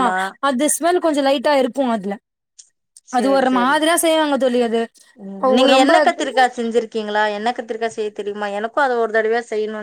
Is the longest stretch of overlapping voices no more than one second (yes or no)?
yes